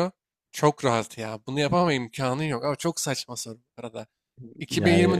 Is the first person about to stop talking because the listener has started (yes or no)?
no